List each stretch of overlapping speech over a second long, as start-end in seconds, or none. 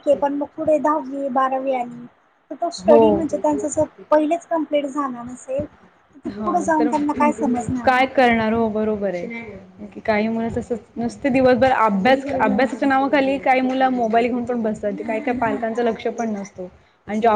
none